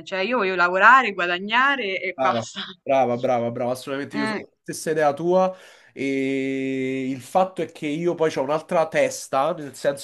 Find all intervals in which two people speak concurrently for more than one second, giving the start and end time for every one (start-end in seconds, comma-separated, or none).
none